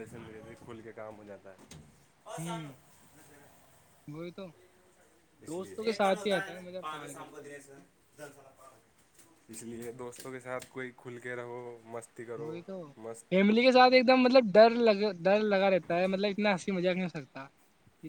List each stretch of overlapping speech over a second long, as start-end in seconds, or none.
5.5-7.4